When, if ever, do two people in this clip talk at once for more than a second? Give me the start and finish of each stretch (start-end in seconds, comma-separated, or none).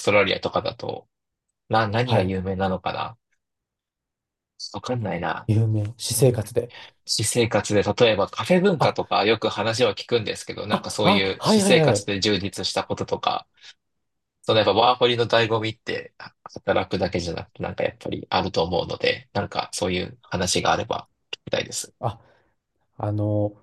10.7-12.1